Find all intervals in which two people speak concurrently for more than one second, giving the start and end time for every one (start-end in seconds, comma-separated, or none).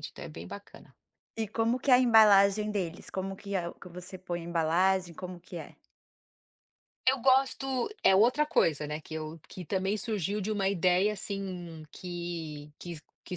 none